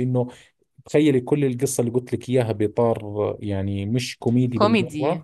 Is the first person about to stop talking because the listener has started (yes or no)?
no